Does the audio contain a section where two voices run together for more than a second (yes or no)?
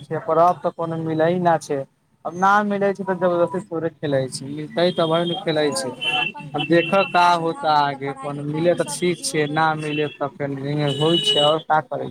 yes